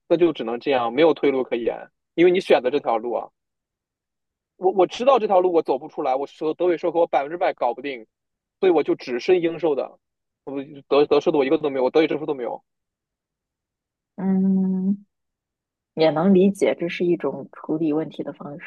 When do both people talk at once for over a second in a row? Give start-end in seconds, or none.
none